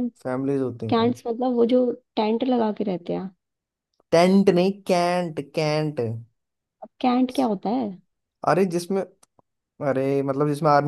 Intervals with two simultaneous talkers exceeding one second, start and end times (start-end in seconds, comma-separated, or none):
none